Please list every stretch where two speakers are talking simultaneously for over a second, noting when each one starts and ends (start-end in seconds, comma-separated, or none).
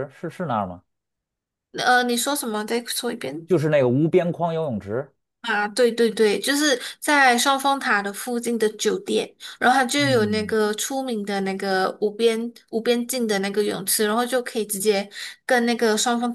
none